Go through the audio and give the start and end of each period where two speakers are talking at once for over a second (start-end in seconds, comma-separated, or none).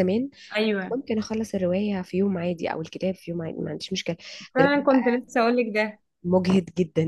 none